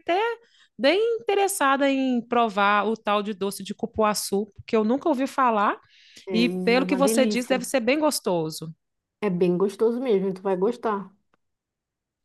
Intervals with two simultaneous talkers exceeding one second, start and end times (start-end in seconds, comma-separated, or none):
6.3-7.7